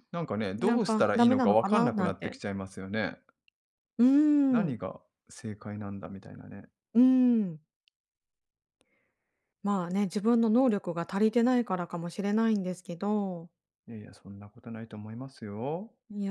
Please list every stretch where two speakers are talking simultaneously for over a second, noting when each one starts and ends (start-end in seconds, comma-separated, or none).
0.6-2.4